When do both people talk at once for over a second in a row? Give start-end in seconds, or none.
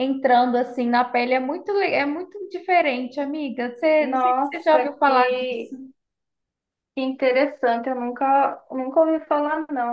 4.0-5.7